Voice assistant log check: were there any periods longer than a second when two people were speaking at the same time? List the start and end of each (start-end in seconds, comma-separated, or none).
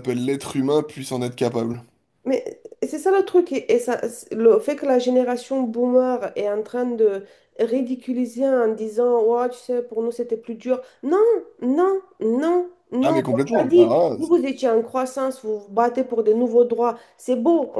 13.0-14.5